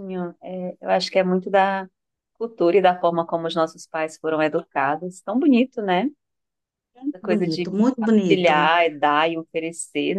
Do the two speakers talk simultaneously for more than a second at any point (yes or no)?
yes